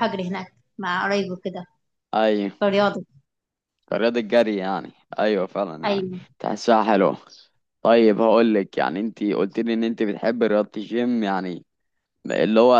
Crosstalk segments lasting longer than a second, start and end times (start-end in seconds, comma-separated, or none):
none